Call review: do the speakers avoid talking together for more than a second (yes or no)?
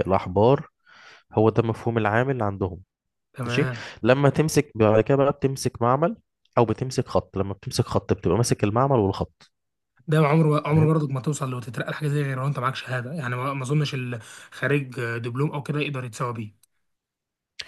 yes